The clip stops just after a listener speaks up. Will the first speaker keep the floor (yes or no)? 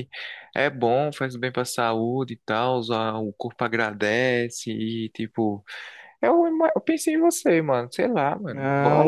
no